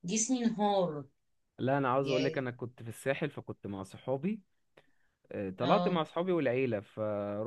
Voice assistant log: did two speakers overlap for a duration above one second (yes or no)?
no